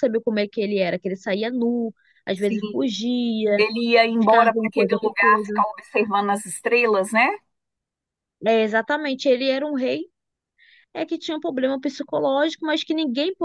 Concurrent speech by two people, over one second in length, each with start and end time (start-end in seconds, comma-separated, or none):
4.2-5.6